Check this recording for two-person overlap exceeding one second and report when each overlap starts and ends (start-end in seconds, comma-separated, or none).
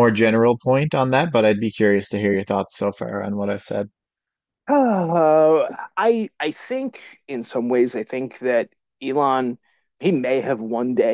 none